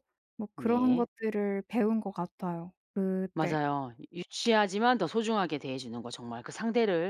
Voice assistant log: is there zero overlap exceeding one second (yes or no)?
yes